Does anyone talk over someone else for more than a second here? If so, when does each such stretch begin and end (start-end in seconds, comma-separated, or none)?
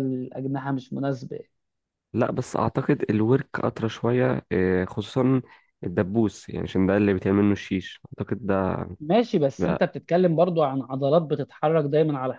none